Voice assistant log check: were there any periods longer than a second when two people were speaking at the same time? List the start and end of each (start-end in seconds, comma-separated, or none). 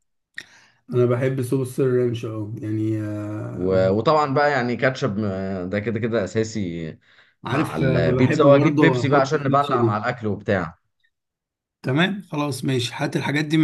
7.5-10.0